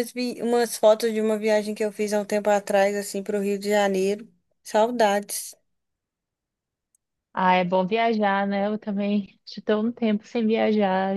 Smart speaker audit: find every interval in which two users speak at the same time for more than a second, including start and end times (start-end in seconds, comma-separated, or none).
none